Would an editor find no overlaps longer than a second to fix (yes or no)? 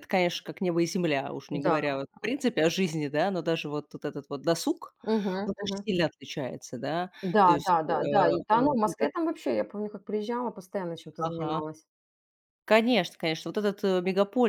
no